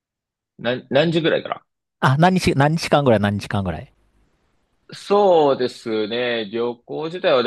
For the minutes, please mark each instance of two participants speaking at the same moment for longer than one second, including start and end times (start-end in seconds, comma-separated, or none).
none